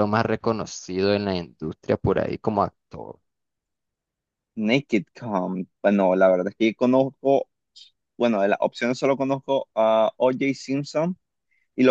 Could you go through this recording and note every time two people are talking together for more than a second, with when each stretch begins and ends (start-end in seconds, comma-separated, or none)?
none